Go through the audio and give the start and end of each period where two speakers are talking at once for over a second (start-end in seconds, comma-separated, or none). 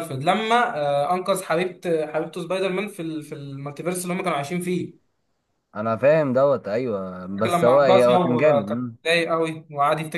7.4-9.0